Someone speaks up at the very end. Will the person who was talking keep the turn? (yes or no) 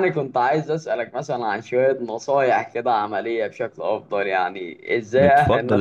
no